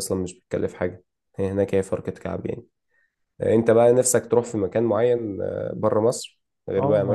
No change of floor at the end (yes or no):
no